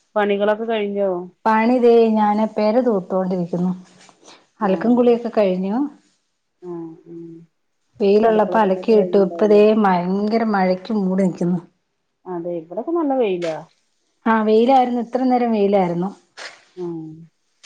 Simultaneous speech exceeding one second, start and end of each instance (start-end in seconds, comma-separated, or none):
8.3-9.6